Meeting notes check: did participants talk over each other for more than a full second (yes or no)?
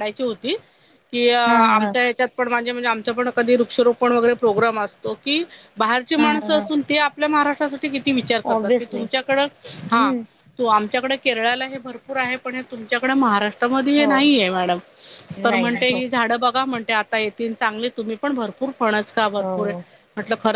no